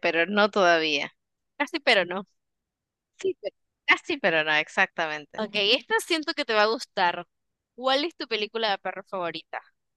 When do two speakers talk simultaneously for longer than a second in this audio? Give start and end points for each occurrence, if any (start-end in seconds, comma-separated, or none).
none